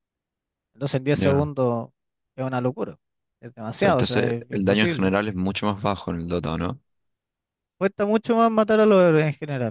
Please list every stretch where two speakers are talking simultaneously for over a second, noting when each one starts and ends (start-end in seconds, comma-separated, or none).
3.8-5.1